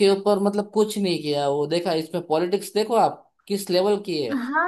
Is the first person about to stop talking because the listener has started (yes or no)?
yes